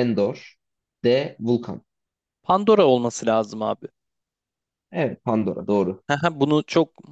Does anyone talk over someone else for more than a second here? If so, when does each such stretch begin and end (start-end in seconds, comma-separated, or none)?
none